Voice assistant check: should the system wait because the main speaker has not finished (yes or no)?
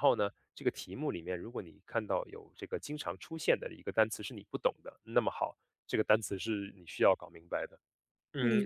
yes